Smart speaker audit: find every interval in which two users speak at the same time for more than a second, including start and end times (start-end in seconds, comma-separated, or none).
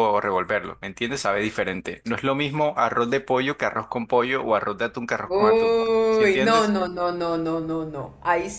5.2-6.8